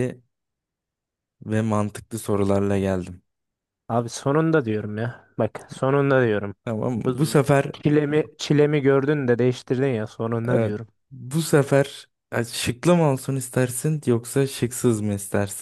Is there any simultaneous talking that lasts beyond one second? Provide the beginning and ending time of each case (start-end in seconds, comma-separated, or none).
none